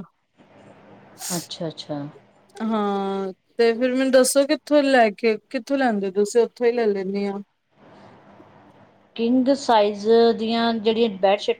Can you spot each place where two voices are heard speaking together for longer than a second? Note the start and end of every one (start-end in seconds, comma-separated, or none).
none